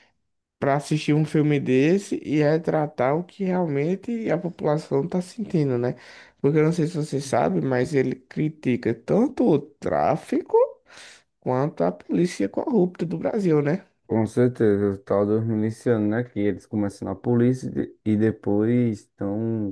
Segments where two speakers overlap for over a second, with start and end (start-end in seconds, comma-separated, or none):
none